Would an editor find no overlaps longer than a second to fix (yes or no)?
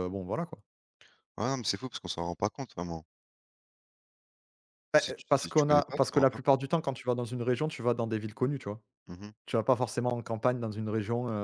no